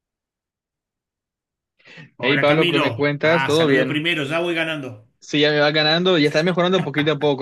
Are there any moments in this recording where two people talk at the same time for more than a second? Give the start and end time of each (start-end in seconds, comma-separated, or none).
2.2-4.1